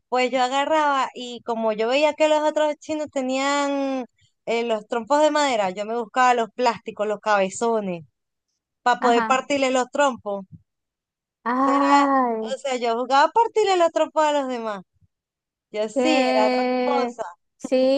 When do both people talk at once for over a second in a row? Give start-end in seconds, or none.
15.9-17.2